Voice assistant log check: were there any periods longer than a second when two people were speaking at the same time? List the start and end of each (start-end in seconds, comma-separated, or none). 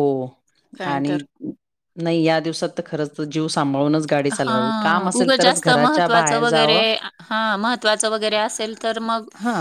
5.2-6.8